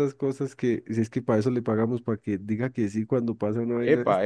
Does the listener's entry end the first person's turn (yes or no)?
yes